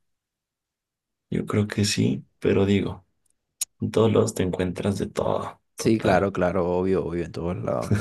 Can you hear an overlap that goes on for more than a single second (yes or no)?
no